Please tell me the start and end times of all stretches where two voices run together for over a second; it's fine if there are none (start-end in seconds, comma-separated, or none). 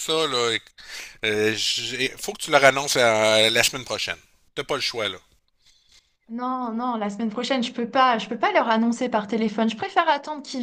none